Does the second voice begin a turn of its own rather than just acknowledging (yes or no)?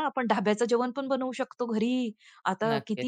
no